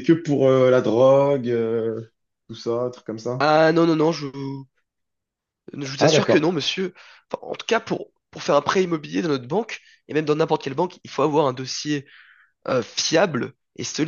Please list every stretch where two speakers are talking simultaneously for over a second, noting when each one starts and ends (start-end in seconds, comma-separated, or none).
none